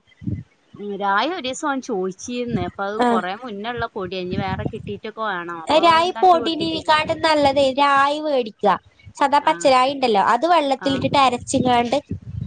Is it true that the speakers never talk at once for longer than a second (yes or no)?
yes